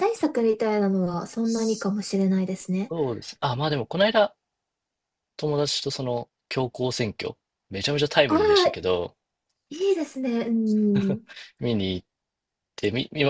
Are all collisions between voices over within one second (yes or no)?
yes